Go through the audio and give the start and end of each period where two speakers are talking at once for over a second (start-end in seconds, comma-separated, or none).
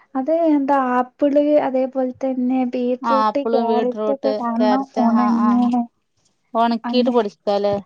3.1-5.5